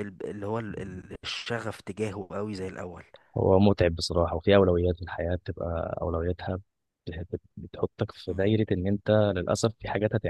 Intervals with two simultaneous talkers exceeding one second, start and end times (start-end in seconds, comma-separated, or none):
none